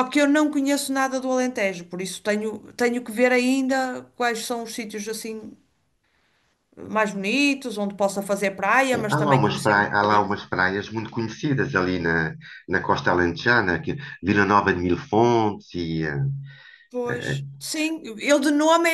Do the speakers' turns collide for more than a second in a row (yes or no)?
yes